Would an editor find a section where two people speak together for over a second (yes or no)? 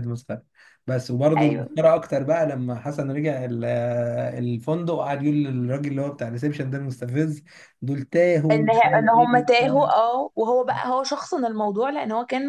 yes